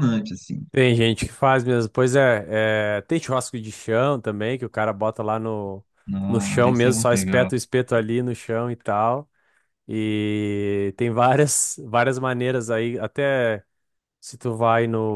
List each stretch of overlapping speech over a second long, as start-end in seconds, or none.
6.3-7.5